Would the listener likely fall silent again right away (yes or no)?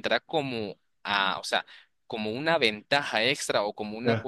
no